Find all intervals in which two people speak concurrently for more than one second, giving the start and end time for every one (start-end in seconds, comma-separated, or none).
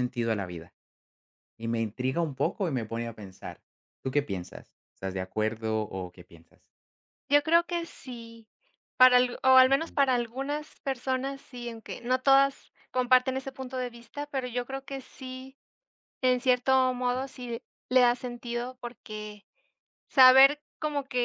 none